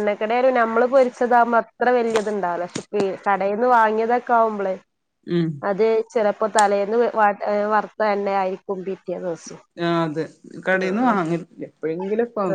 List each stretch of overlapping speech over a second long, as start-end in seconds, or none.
none